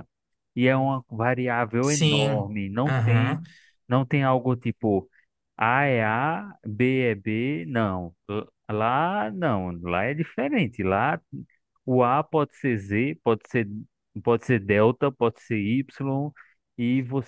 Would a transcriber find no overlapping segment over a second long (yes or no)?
no